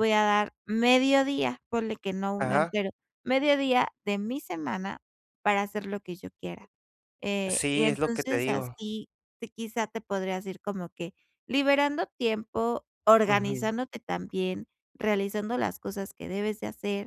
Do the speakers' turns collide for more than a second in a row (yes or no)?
yes